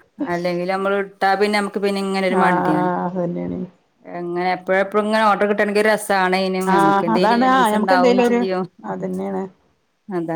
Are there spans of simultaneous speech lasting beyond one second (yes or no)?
yes